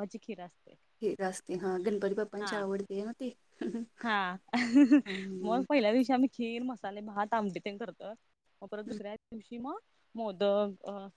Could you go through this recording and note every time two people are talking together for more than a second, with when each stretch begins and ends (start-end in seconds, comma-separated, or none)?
none